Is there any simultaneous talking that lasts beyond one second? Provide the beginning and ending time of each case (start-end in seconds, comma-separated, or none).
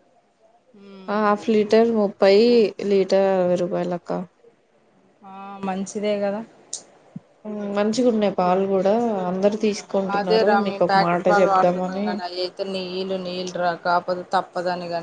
10.2-12.1